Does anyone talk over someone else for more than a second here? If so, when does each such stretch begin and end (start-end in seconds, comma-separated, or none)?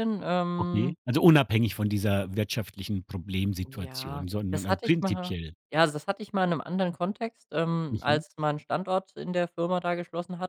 3.7-5.5